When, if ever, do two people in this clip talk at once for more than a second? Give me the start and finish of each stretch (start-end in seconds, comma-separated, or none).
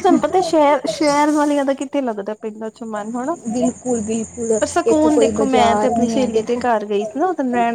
4.6-6.6